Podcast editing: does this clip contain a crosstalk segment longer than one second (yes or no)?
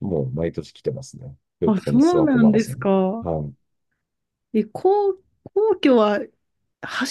yes